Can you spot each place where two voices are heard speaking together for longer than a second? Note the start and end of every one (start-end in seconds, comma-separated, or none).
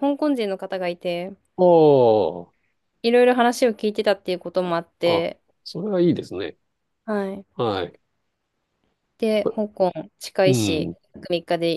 none